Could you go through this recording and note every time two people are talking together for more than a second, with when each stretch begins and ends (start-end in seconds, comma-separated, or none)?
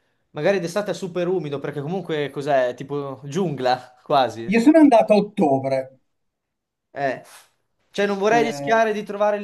none